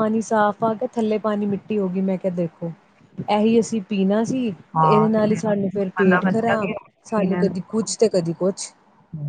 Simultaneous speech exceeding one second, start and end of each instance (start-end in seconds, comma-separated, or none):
4.8-6.7